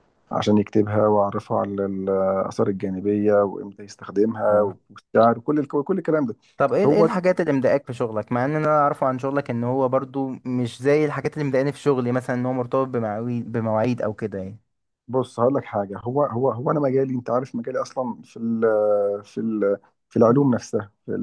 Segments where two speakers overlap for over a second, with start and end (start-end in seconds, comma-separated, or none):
none